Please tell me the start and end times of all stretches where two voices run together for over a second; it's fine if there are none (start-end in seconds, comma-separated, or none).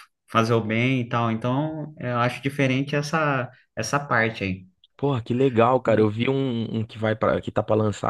none